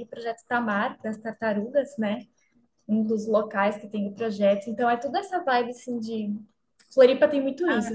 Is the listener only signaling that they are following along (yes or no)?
yes